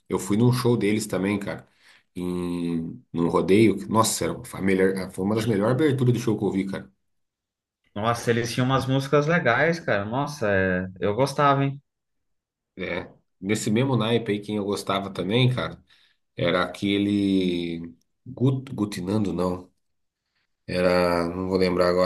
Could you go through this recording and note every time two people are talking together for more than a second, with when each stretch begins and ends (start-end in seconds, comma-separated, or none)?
none